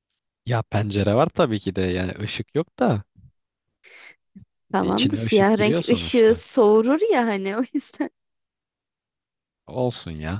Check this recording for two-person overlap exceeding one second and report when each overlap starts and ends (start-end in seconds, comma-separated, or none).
4.8-6.4